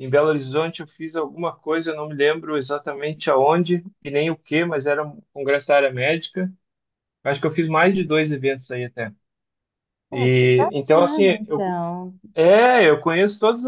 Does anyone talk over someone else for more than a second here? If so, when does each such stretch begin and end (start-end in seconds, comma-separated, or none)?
10.1-11.8